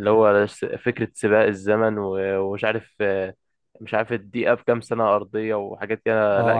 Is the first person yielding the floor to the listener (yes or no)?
yes